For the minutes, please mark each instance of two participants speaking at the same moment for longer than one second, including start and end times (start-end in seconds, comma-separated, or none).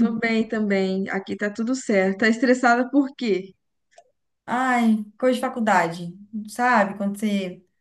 none